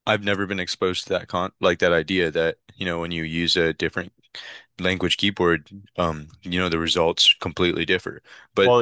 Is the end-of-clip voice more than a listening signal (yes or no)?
no